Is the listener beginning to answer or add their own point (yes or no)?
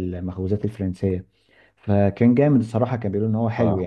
no